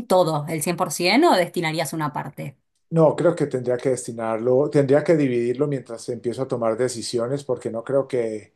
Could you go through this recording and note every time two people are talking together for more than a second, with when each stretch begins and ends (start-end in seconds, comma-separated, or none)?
none